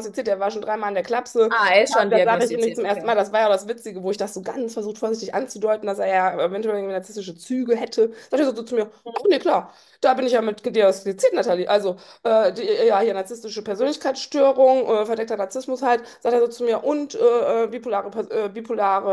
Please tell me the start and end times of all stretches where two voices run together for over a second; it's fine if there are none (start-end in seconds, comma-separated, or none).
1.5-3.1